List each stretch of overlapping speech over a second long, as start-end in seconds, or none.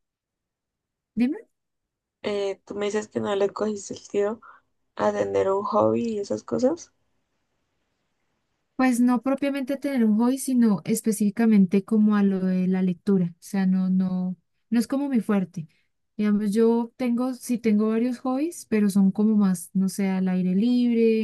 none